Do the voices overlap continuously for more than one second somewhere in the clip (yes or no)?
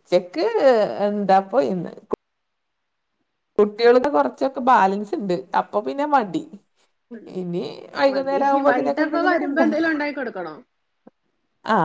yes